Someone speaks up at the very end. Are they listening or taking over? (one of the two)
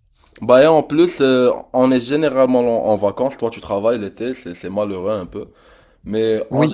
taking over